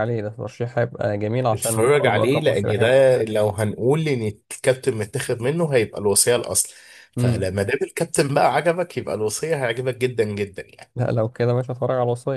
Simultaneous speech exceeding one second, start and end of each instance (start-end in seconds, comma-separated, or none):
1.5-3.0